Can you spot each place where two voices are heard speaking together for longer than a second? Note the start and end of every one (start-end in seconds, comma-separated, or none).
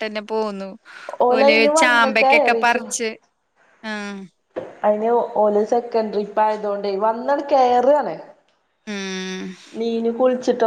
1.4-2.9